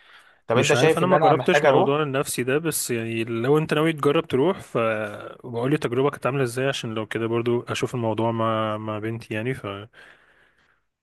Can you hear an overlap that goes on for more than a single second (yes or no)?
yes